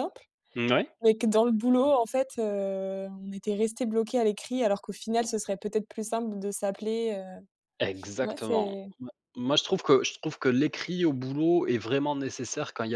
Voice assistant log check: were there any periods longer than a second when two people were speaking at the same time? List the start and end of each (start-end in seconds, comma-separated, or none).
none